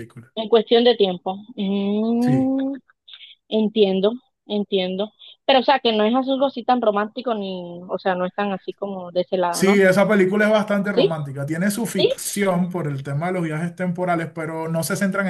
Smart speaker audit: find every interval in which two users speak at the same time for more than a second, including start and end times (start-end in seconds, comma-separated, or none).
none